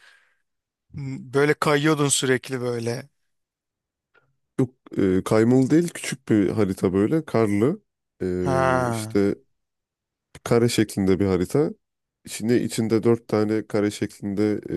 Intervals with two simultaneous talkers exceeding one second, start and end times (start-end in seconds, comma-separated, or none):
none